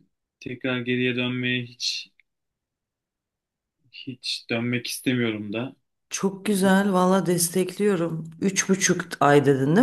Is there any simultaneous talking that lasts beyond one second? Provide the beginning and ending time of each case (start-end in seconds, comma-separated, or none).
none